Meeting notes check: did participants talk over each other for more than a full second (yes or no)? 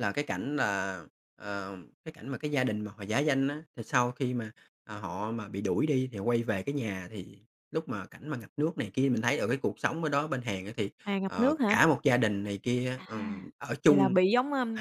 no